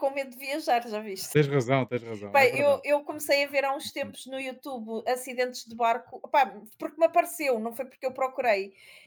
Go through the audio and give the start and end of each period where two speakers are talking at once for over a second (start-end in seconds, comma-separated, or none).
none